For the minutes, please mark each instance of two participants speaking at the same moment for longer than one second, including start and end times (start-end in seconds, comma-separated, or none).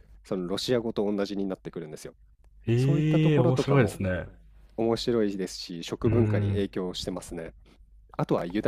2.8-4.0